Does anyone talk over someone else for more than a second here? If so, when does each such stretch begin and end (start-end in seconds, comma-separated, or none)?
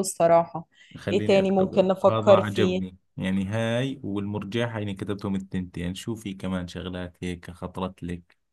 1.1-2.8